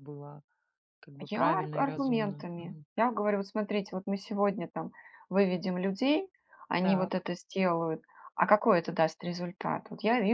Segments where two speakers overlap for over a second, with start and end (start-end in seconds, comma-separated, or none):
1.3-2.9